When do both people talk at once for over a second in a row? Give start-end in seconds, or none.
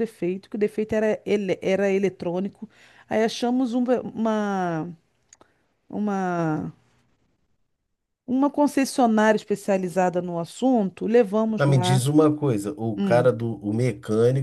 none